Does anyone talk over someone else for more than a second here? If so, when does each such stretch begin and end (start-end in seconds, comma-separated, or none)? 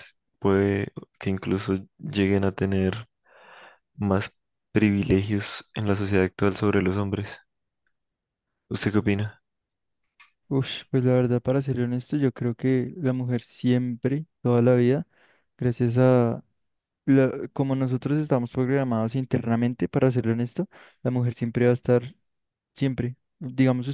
none